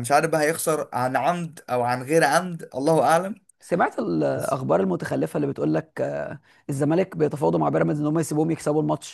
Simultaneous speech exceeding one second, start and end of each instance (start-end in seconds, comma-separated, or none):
none